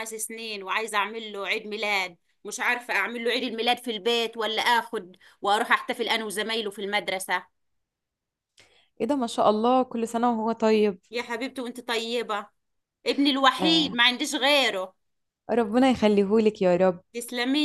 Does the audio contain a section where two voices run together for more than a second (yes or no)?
no